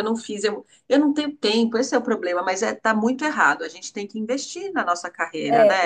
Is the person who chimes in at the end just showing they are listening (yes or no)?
no